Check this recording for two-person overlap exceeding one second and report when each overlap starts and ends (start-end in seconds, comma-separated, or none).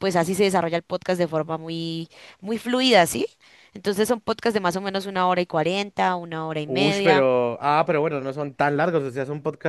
none